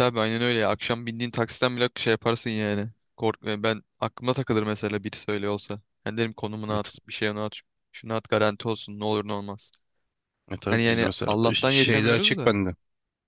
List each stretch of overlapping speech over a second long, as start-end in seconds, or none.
10.7-12.6